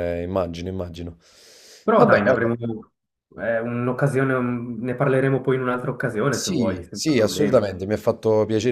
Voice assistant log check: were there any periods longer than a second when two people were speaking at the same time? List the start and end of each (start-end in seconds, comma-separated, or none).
6.3-7.6